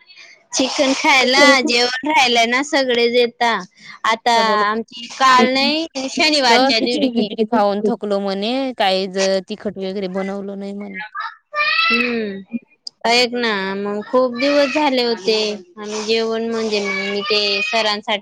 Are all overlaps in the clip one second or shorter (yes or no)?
no